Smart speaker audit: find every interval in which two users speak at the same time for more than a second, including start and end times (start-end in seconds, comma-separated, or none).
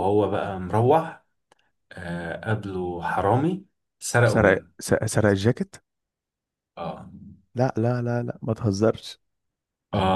none